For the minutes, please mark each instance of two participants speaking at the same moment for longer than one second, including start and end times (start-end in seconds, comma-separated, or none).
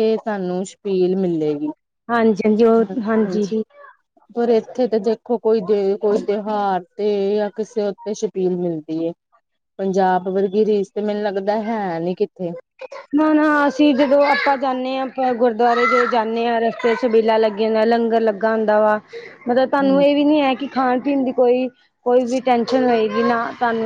none